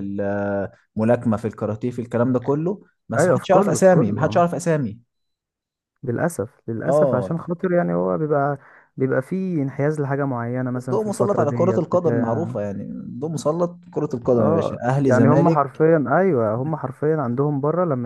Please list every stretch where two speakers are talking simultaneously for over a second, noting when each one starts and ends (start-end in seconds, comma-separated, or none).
3.2-4.5, 10.8-12.6, 14.3-15.8